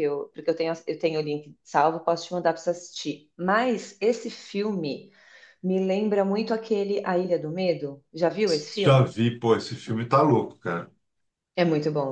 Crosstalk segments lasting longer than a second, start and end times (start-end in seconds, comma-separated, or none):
none